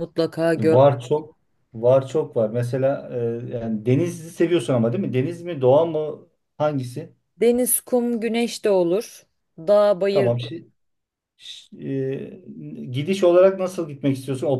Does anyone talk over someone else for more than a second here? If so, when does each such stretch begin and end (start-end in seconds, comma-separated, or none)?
none